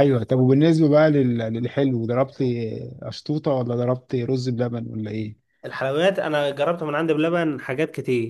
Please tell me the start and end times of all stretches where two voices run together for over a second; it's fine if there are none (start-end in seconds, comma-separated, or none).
none